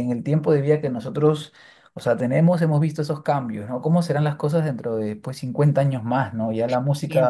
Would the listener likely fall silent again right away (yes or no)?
yes